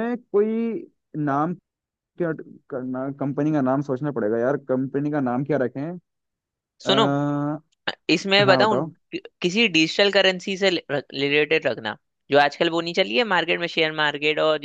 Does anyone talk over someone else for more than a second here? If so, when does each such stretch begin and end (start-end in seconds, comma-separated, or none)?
none